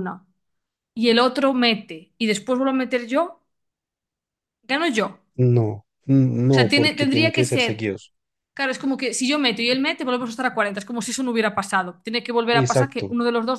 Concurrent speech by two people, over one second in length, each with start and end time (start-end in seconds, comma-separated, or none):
6.5-7.9